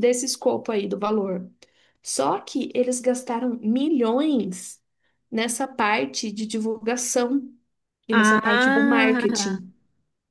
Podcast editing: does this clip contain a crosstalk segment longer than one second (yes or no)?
yes